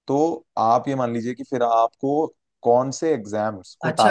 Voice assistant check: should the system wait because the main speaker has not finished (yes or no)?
no